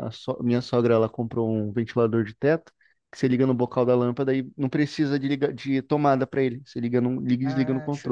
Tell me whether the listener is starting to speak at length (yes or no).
yes